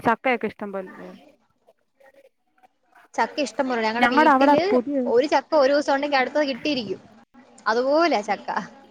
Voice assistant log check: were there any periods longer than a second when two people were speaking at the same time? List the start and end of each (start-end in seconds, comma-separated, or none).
none